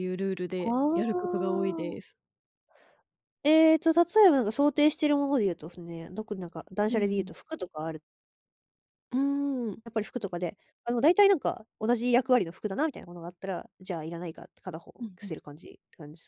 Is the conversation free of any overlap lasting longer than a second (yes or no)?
no